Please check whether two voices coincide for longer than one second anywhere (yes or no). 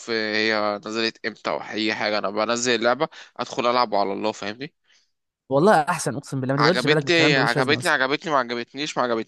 yes